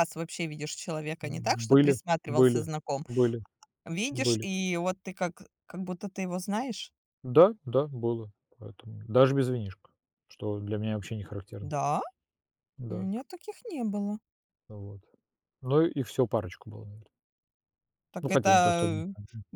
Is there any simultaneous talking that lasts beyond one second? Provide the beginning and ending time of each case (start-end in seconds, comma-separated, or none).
1.2-2.7